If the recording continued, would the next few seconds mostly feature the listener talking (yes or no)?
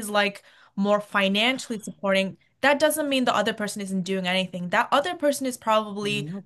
no